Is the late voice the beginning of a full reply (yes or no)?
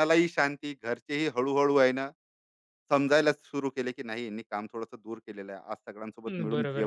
yes